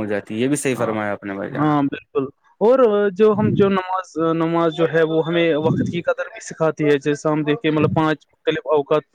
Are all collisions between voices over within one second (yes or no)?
yes